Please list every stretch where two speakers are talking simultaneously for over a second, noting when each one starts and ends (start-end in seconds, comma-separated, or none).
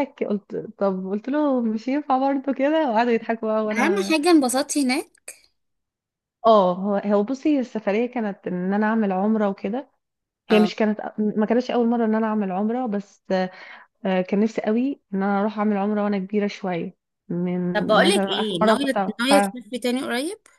17.7-19.6